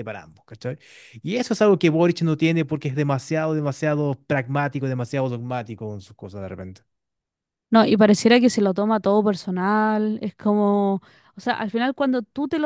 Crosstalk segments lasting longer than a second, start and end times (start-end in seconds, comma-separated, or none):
none